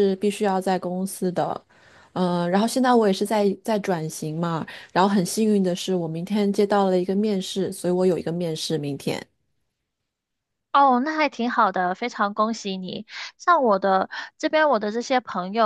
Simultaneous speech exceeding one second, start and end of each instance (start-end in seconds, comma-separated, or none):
none